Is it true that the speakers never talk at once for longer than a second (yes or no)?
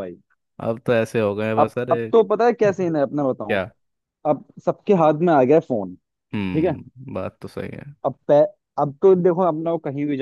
yes